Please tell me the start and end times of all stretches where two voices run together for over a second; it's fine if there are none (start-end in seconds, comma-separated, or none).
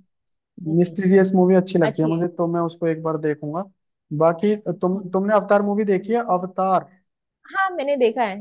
none